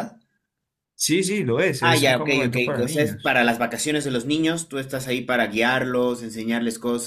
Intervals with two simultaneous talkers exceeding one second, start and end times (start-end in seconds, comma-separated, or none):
1.8-3.4